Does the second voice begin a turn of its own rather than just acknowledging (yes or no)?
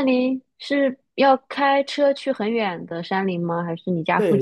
yes